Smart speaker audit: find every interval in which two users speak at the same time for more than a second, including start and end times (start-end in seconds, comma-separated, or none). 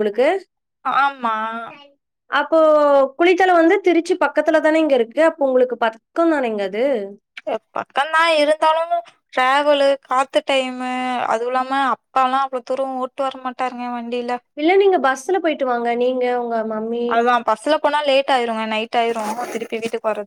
none